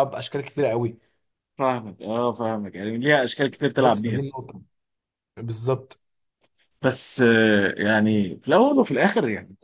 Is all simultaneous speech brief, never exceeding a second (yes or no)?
yes